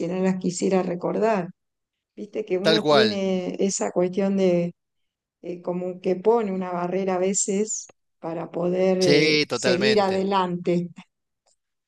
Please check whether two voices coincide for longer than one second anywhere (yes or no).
yes